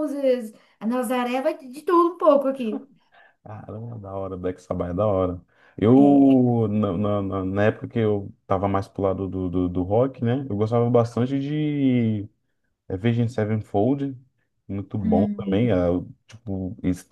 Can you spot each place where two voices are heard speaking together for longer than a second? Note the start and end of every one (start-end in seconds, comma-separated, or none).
none